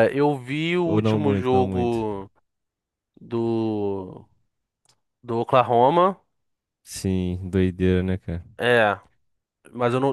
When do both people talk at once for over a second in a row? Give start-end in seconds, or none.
0.8-2.0